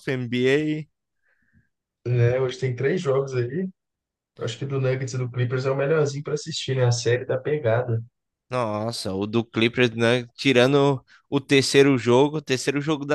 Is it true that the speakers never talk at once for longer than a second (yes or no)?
yes